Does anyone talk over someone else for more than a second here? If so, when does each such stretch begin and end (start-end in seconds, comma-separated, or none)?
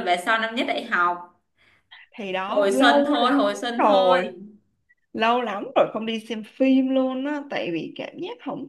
2.5-4.2